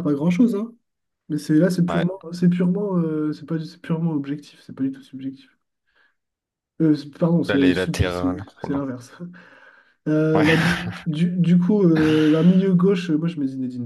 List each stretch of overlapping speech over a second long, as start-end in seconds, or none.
7.5-8.8